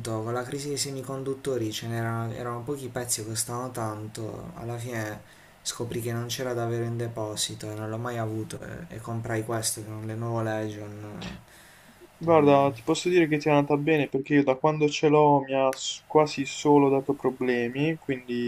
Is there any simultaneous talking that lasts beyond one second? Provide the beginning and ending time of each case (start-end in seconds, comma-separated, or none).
none